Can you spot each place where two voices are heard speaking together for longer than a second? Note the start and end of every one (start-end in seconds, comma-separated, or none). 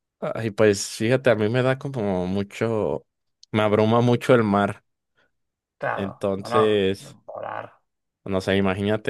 5.9-7.2